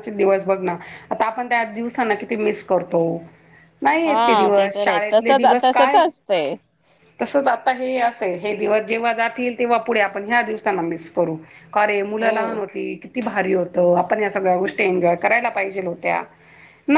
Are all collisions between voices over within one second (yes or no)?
no